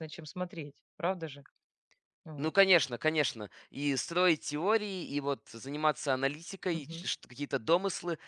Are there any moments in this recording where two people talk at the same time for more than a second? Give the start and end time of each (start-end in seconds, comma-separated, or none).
none